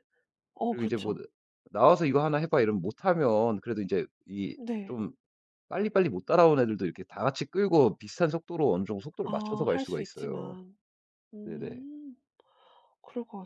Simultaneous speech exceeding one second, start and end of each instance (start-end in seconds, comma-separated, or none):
9.2-10.6